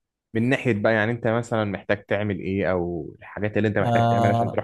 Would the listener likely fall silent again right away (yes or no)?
no